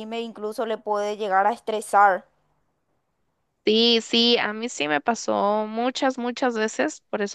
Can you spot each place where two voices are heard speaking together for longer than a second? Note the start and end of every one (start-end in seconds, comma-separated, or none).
none